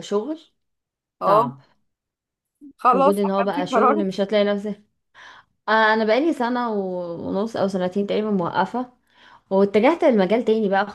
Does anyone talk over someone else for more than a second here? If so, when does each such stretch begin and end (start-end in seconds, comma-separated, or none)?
2.9-4.2